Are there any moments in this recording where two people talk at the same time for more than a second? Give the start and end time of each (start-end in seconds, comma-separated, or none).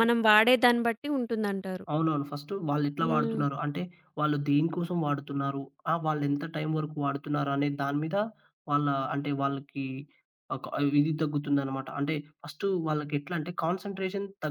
none